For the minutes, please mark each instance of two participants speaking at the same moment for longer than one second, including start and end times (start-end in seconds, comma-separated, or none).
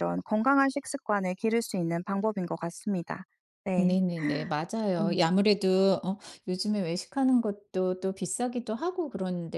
none